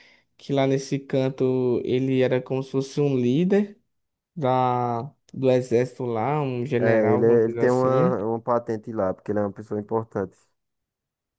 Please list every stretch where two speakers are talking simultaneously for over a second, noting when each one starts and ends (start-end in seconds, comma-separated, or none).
6.8-8.1